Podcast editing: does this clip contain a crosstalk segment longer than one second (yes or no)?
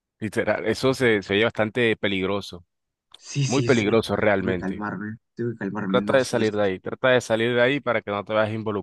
yes